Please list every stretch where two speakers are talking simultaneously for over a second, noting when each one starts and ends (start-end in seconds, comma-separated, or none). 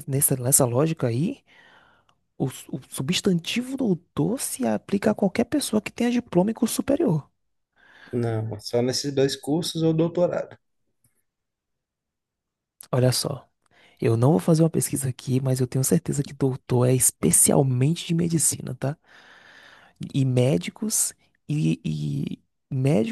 none